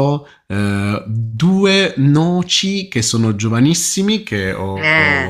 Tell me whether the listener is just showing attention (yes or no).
yes